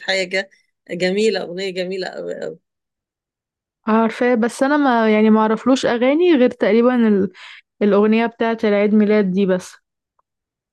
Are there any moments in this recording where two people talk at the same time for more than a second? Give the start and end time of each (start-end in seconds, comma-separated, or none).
none